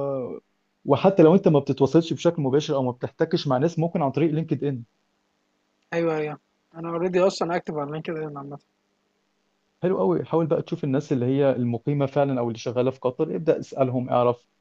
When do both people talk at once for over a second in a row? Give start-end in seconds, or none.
none